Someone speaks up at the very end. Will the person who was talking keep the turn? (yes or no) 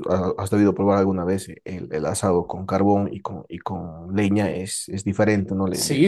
no